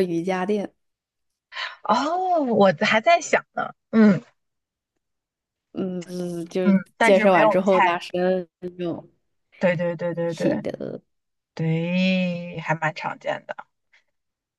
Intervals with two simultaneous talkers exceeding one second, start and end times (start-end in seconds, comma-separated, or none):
6.6-8.0